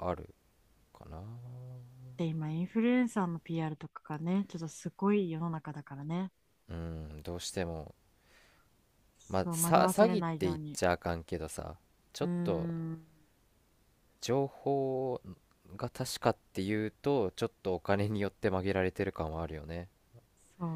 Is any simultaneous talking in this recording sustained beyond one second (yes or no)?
yes